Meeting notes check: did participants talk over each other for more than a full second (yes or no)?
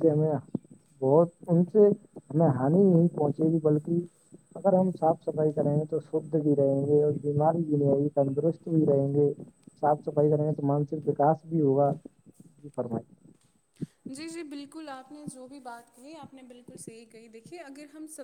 no